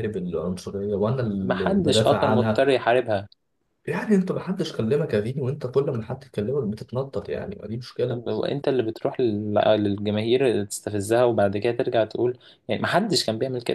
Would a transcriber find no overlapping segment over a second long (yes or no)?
no